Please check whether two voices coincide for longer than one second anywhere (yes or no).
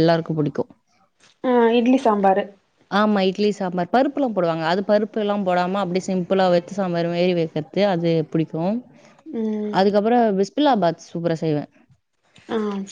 no